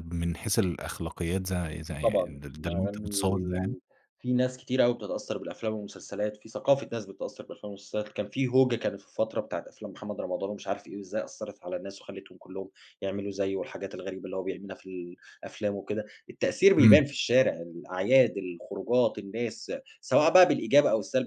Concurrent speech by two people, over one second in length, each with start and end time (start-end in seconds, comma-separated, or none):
2.0-3.8